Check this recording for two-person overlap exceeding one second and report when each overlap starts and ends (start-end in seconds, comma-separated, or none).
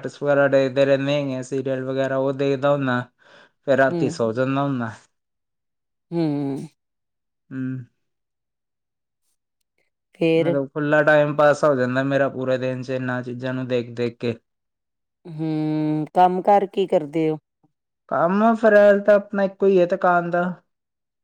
none